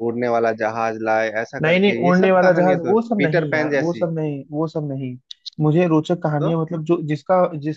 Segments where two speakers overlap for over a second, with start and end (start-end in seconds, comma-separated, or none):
1.6-4.1